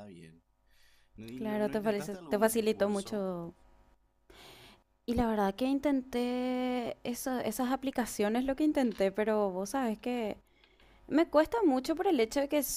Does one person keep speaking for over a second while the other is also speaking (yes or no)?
yes